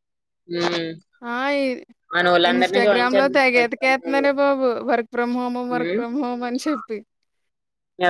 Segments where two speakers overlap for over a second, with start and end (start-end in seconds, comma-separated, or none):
2.5-4.3